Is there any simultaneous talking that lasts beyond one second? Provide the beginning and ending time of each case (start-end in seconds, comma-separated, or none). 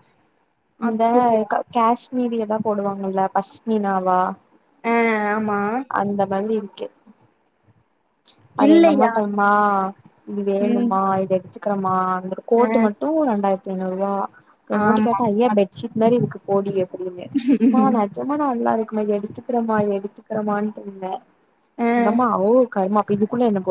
none